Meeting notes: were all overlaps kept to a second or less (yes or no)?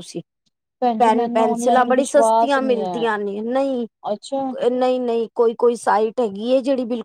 no